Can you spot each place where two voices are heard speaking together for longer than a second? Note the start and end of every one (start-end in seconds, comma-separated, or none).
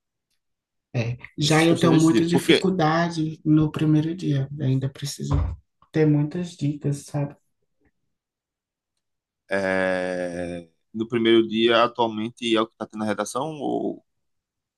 1.4-2.7